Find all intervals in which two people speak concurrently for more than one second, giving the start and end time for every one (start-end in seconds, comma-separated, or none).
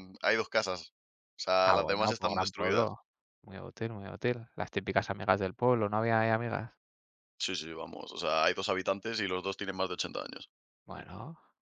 1.6-3.0